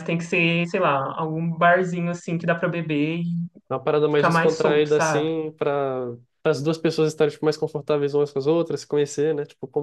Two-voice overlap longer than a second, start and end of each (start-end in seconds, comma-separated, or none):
4.1-5.3